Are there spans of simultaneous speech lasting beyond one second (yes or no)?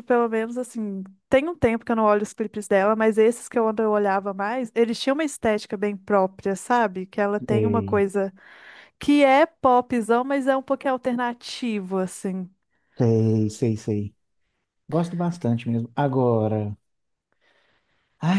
no